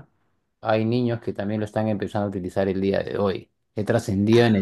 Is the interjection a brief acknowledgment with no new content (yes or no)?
yes